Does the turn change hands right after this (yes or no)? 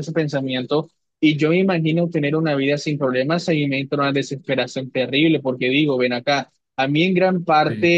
no